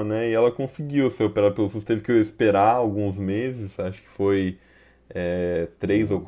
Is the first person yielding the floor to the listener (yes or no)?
no